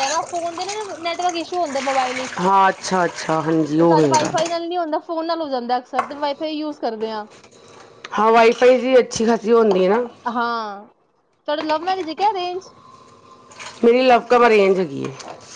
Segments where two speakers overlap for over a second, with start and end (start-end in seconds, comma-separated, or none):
none